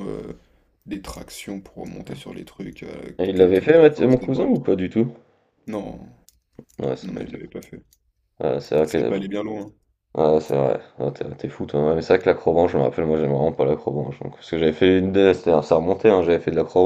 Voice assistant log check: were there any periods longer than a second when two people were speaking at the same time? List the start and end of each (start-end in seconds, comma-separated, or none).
3.2-4.7